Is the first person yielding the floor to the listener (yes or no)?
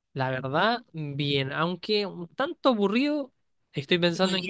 no